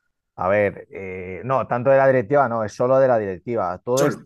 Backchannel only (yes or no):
yes